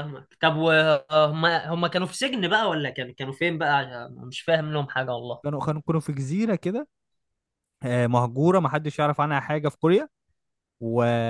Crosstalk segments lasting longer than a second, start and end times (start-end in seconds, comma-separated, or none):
none